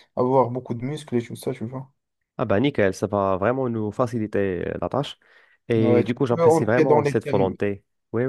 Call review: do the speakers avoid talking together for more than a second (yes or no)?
no